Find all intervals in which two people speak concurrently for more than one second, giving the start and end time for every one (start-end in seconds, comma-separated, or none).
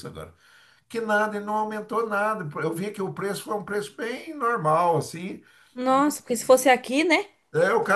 none